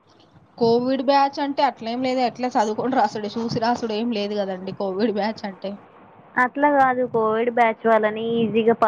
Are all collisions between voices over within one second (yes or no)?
yes